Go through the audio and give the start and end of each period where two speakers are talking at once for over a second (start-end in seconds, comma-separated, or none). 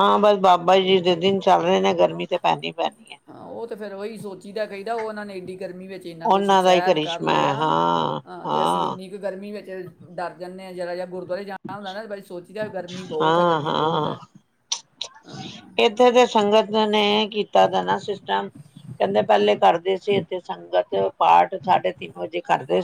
6.2-7.5